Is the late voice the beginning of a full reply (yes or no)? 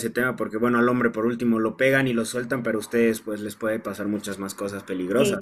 yes